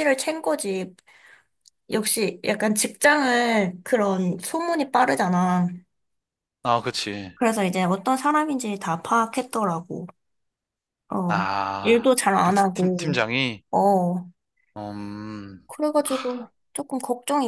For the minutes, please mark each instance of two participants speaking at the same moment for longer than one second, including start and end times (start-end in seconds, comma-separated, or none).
11.3-13.2